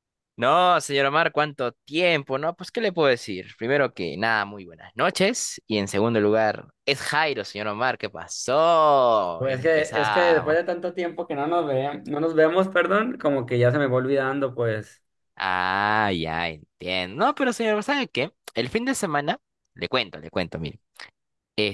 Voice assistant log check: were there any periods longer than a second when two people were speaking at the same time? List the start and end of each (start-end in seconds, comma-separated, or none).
9.4-10.6